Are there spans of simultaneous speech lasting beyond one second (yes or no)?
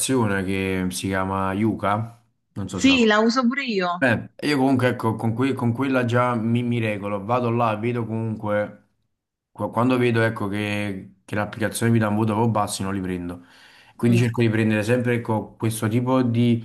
no